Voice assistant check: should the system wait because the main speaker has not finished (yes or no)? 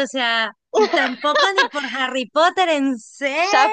no